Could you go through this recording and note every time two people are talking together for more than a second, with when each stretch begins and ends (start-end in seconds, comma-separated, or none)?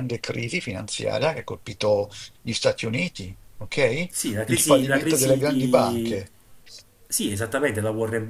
4.1-6.2